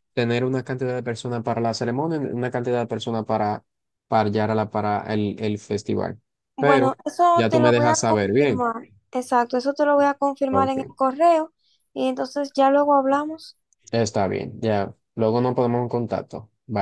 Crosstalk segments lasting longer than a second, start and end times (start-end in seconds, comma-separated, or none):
6.6-8.7